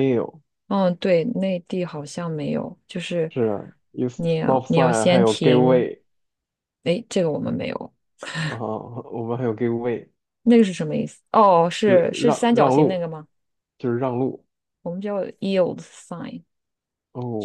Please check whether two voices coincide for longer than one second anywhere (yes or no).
yes